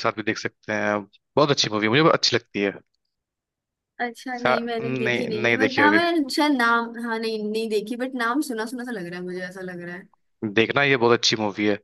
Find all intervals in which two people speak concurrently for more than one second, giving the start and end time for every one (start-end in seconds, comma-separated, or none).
4.4-6.0